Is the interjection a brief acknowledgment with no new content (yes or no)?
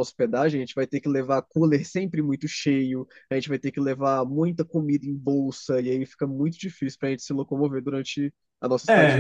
no